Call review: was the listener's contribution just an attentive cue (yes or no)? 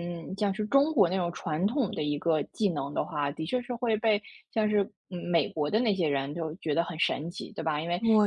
yes